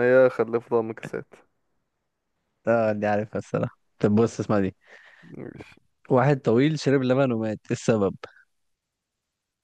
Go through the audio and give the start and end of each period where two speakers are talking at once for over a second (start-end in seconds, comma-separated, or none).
none